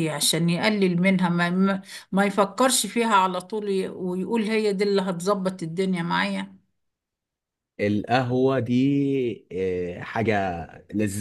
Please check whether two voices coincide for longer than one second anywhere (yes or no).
no